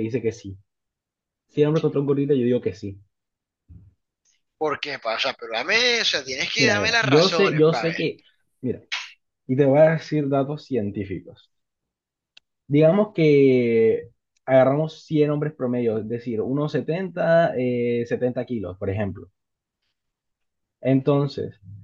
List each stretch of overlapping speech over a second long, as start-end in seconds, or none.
6.6-8.0